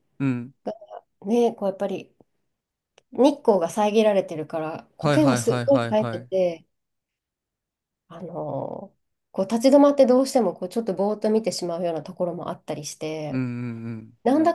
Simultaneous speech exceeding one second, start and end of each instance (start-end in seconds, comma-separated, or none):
5.0-6.3